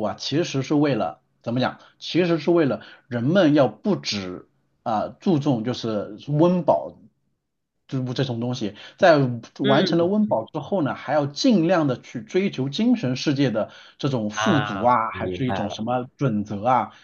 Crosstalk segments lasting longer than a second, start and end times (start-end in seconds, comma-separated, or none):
14.3-15.8